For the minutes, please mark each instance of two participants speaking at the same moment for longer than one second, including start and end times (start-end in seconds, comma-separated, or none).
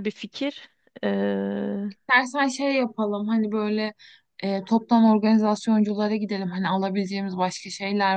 none